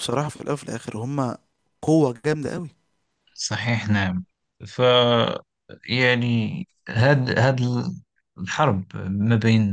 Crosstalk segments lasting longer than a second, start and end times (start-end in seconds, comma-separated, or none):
none